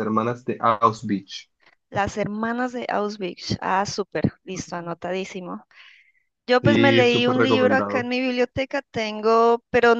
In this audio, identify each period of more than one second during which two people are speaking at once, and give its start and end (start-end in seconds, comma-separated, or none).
6.6-8.1